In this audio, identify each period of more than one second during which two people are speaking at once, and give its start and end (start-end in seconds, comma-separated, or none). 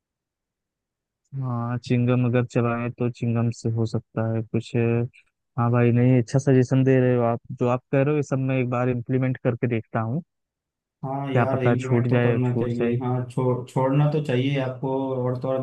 11.3-13.0